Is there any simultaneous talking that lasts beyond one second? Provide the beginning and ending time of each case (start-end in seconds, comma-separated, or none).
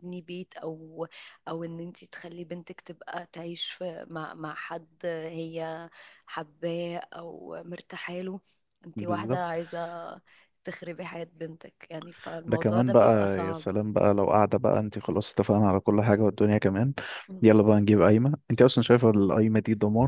12.5-13.7